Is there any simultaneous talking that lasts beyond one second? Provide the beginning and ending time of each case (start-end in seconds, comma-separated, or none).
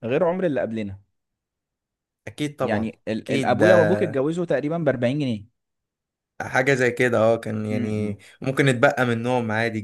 2.6-3.9